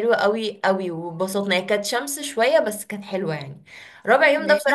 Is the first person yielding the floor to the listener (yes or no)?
no